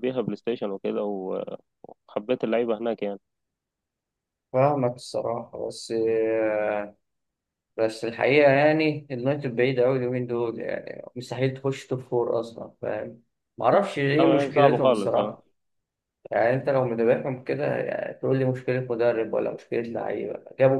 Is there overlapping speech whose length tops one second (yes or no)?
yes